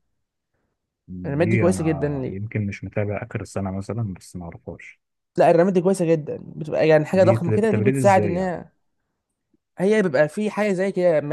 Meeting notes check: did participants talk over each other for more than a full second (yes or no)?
yes